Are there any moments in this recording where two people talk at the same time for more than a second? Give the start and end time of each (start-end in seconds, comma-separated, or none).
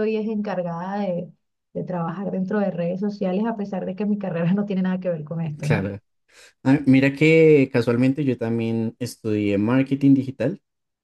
none